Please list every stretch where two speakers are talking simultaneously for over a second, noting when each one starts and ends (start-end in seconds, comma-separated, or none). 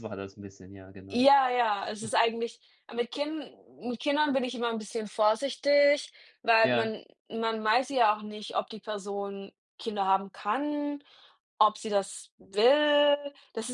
none